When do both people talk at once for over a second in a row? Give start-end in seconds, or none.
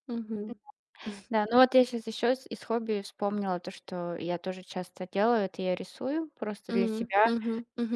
none